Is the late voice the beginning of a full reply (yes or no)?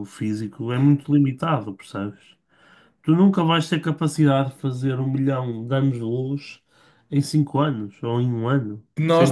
yes